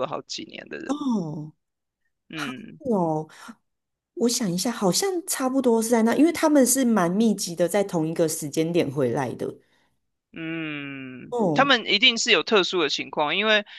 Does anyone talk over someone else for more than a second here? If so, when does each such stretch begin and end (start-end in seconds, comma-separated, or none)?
none